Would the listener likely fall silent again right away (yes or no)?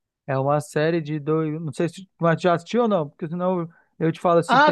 no